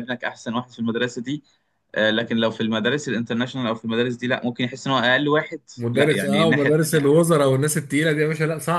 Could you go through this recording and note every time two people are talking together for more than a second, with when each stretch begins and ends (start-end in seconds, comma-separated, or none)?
5.8-7.3